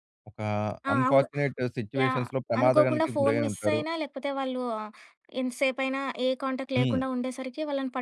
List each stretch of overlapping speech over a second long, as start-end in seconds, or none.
2.0-3.8